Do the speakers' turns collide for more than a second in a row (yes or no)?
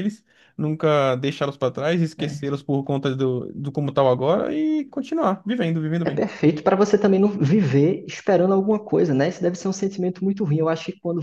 no